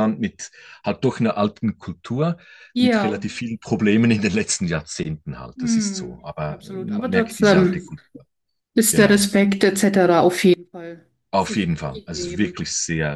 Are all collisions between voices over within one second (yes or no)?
no